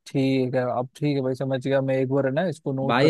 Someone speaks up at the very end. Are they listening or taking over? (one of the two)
taking over